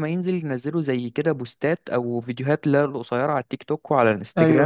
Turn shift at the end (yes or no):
no